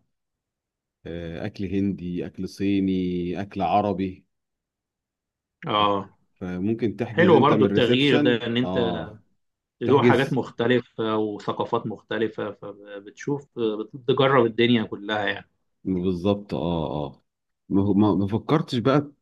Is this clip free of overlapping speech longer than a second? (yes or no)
no